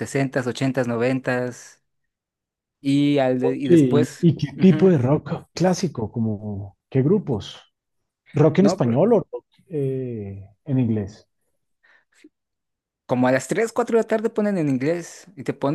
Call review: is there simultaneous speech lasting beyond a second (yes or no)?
yes